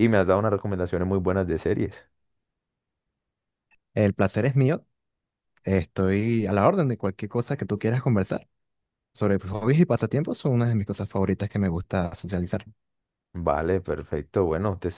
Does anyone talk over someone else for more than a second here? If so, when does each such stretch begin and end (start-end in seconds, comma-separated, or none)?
none